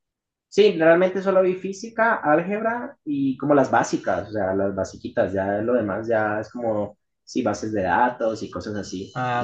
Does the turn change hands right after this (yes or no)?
yes